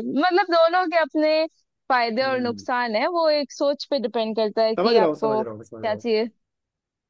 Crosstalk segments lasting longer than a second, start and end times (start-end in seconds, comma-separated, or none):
4.8-6.0